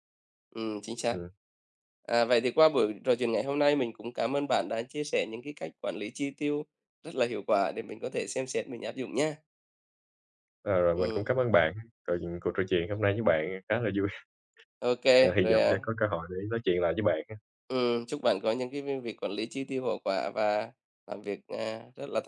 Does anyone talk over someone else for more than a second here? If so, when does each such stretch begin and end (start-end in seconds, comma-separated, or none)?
none